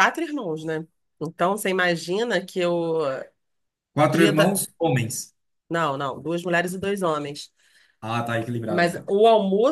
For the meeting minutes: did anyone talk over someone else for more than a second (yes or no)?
no